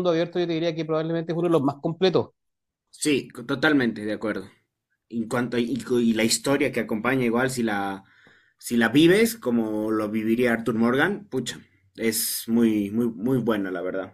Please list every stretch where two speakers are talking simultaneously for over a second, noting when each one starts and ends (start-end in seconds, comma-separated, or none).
none